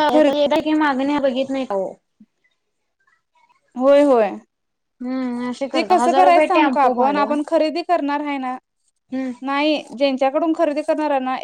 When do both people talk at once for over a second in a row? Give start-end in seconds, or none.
5.7-7.3